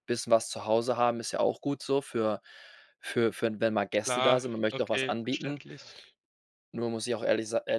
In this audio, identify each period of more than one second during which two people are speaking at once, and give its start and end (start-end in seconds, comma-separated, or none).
3.9-5.6